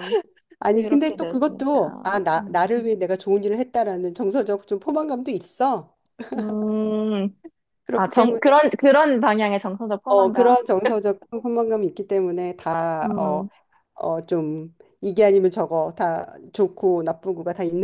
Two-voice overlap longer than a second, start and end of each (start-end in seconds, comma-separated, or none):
0.7-2.7